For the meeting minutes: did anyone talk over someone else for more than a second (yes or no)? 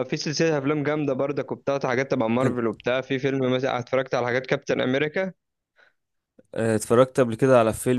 no